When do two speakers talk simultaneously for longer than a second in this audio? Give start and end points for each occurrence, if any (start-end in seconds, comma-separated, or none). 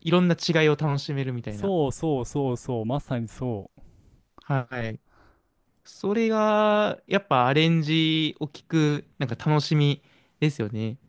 none